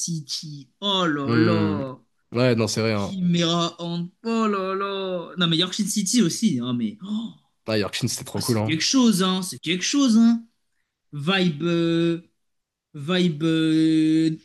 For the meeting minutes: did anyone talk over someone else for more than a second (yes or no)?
no